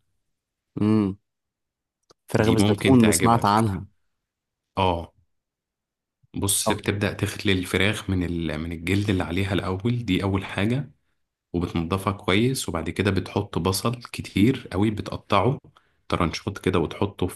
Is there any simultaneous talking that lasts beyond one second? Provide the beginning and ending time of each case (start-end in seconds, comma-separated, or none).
2.4-3.8